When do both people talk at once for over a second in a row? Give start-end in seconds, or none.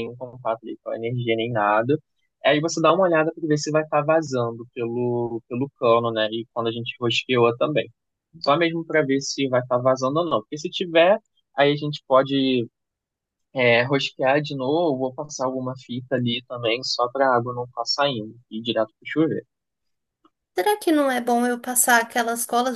none